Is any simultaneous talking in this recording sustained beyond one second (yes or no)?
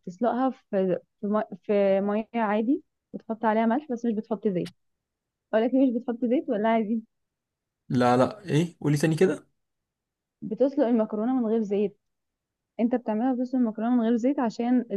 no